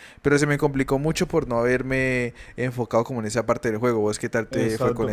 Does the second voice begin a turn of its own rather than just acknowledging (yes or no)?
yes